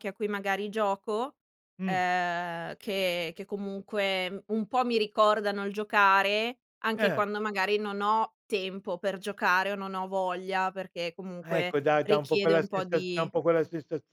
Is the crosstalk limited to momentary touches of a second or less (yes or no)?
no